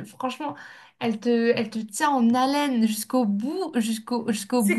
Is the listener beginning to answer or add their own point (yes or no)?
yes